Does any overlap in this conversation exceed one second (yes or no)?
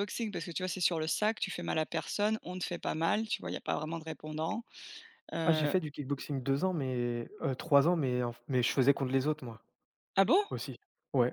no